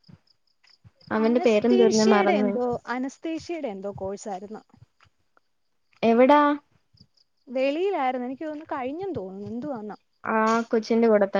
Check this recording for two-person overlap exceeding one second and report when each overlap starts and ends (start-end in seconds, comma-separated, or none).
1.2-2.5